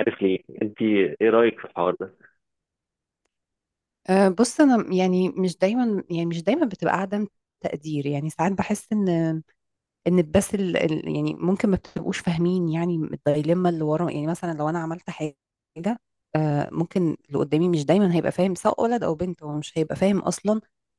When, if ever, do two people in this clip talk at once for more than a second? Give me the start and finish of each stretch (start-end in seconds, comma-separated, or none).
none